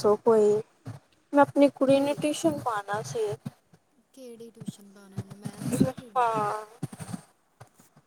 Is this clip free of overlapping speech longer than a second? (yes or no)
yes